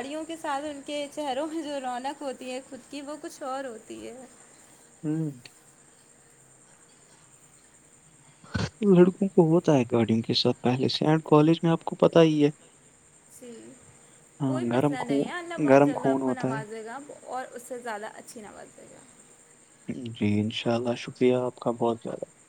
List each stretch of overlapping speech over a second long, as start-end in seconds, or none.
14.5-16.5